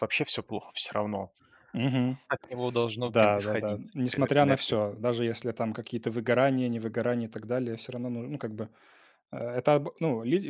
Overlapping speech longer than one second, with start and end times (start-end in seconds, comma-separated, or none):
3.0-4.8